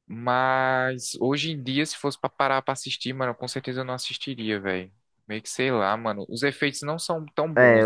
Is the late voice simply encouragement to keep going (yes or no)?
no